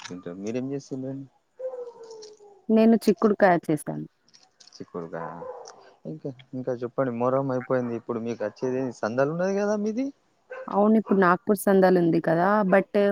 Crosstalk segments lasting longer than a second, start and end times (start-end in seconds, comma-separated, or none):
none